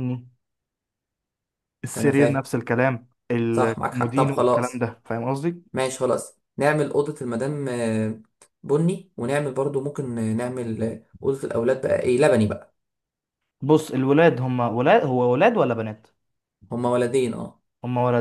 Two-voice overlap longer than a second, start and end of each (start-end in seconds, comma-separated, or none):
3.5-4.8